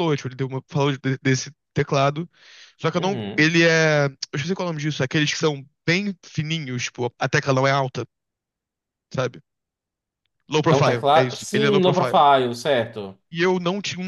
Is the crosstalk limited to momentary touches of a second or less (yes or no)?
no